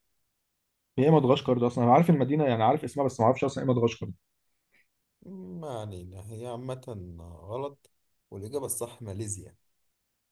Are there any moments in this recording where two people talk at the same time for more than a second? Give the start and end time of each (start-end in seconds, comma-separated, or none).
none